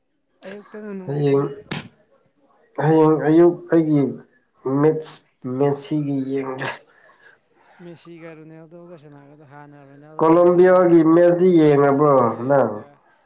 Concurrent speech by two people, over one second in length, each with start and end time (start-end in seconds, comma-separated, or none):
10.2-12.8